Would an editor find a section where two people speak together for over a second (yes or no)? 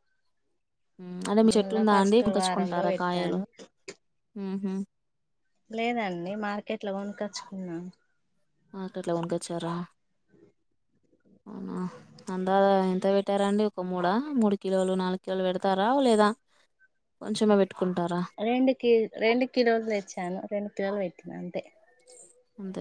yes